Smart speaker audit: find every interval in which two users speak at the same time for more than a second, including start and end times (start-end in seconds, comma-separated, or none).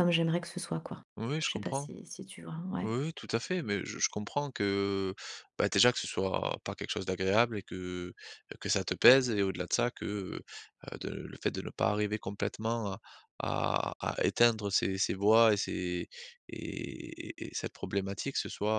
none